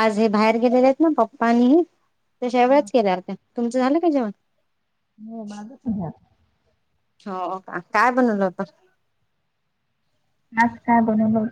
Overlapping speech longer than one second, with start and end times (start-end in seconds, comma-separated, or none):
none